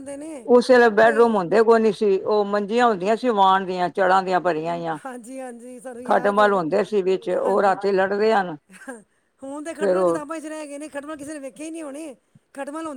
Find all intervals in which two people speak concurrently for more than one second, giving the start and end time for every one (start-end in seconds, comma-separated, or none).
none